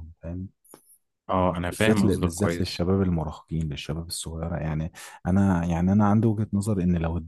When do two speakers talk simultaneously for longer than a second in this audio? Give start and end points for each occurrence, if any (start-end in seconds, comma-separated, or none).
1.6-2.9